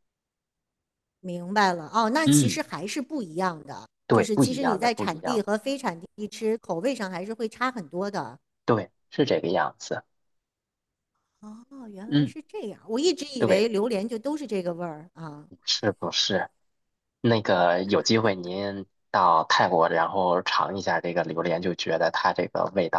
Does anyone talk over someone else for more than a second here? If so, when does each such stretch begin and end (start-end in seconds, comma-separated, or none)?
4.1-5.5